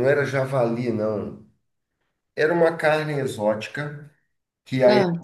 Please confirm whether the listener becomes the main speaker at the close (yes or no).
no